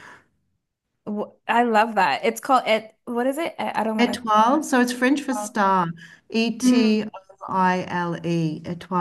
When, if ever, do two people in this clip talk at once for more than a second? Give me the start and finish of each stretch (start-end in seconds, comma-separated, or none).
none